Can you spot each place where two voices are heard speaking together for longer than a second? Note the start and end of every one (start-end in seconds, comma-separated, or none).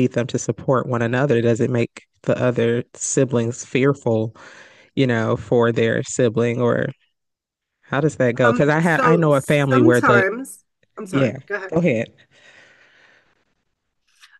8.4-10.2